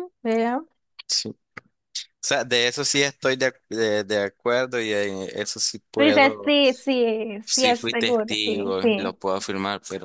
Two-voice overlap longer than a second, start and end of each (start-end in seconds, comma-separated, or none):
7.5-9.2